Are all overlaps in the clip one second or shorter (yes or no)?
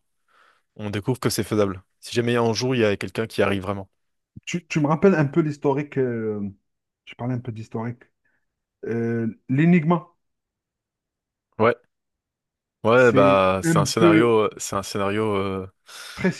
no